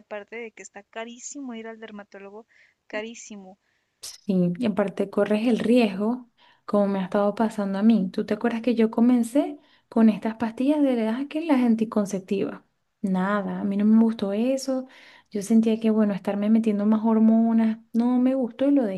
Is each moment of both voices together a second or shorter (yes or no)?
yes